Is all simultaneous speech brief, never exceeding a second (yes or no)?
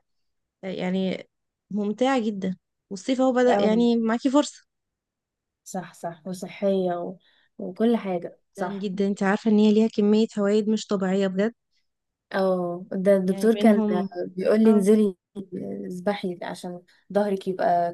yes